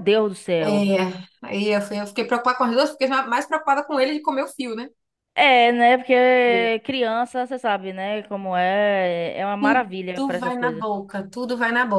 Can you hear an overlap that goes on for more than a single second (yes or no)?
yes